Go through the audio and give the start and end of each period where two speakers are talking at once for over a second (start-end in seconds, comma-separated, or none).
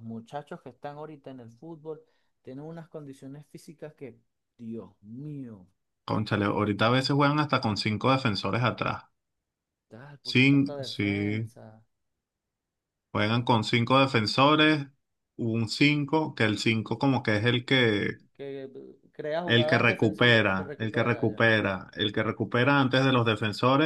10.2-11.5, 19.5-21.5